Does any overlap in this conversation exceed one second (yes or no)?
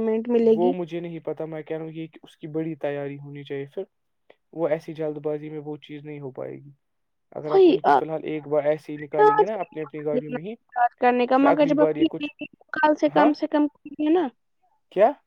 no